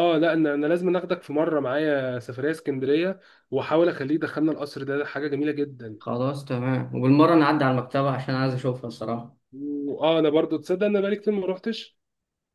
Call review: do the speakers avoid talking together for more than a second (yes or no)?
yes